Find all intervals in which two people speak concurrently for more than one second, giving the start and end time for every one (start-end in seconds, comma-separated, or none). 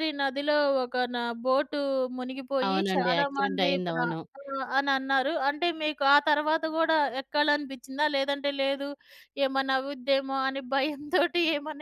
2.7-4.2